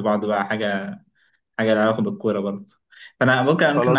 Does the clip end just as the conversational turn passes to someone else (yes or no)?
no